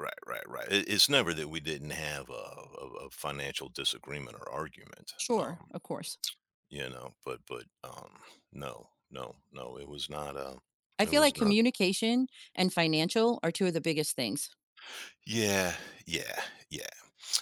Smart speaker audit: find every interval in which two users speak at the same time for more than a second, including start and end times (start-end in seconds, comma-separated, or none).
none